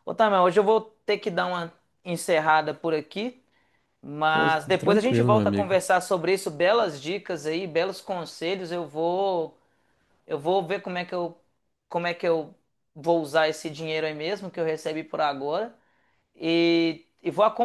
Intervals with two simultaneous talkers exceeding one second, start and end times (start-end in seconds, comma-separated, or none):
4.3-5.8